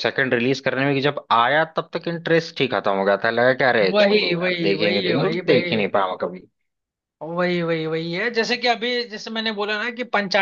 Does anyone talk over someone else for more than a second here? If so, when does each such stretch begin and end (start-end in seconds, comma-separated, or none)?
3.9-5.8